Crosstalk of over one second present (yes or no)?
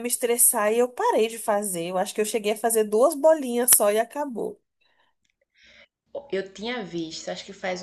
no